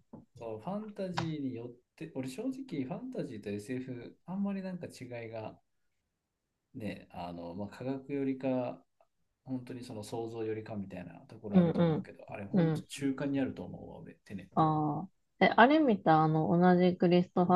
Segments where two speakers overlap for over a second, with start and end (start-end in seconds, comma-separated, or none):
none